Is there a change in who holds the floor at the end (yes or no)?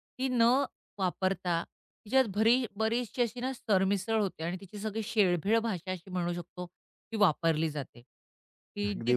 no